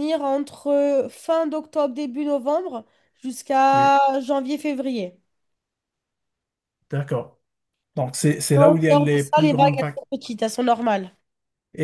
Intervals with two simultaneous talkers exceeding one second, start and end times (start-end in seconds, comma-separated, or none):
8.6-10.0